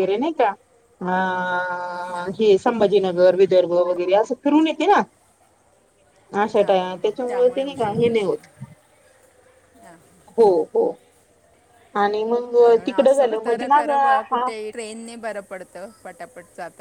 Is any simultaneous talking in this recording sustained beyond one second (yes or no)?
yes